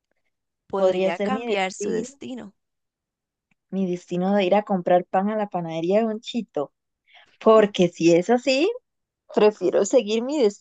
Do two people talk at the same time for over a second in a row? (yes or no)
yes